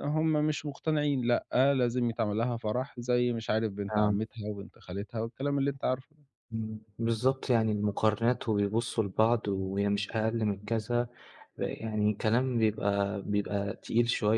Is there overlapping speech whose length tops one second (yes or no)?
no